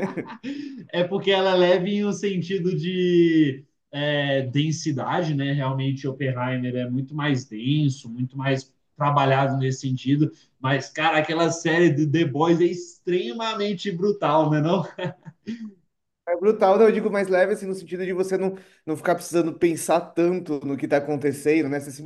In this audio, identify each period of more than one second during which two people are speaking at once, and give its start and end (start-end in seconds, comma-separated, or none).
none